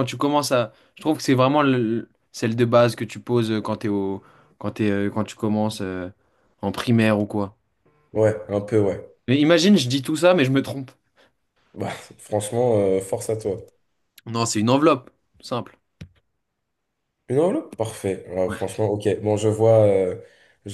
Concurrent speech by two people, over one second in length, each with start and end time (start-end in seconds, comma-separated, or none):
none